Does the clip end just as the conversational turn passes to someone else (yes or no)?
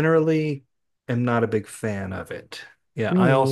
no